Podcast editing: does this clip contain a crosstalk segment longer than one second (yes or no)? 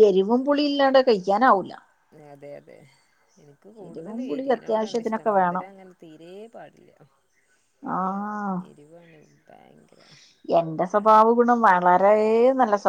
yes